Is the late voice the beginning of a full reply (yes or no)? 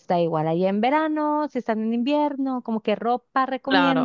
yes